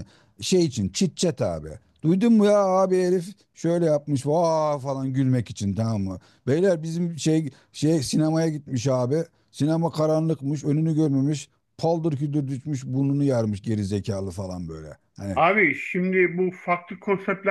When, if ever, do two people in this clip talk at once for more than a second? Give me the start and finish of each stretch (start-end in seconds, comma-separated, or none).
none